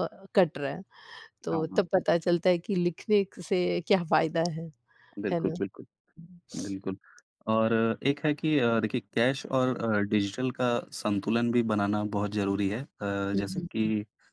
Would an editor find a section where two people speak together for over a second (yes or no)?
no